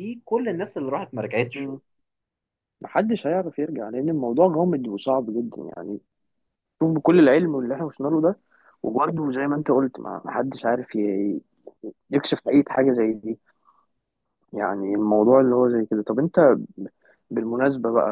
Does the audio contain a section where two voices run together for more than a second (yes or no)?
no